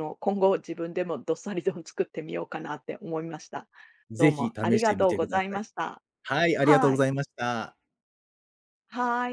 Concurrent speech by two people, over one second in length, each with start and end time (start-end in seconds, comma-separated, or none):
4.2-5.6